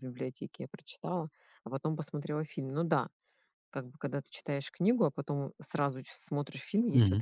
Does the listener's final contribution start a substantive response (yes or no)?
no